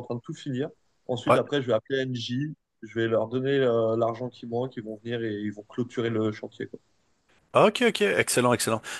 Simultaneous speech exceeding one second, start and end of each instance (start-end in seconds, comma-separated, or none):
none